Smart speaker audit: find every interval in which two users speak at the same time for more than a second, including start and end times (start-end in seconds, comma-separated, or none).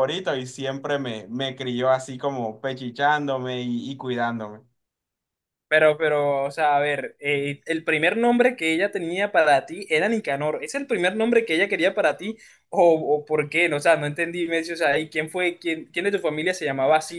none